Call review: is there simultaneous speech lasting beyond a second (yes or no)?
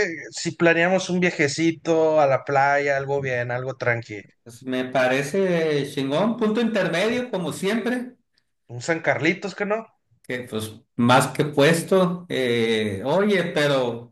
no